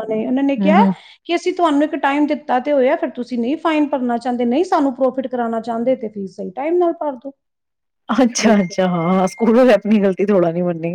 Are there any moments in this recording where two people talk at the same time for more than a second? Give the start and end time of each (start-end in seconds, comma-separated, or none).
none